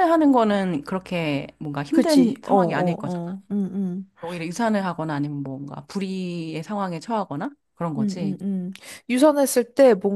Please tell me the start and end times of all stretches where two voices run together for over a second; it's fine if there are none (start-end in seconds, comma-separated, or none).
1.9-3.2